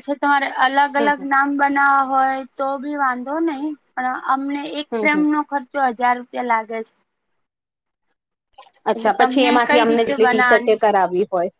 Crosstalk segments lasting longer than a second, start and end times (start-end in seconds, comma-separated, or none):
8.9-10.9